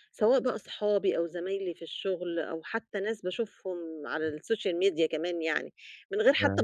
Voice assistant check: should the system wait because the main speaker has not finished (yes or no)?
yes